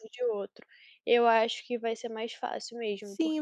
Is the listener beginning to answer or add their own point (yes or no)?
yes